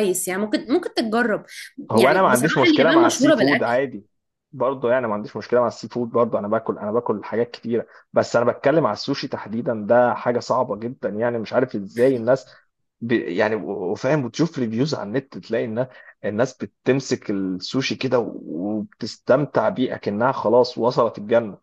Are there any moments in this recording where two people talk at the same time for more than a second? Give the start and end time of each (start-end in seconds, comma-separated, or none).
2.0-3.8